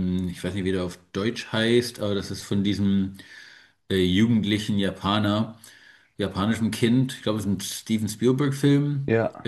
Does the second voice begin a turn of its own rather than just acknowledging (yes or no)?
no